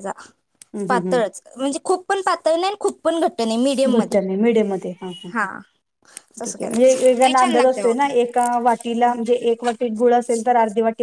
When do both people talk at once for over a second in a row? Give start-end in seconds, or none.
6.5-8.1